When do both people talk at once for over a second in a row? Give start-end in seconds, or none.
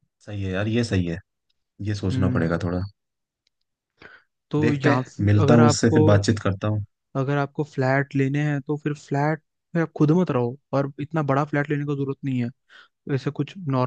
4.6-6.0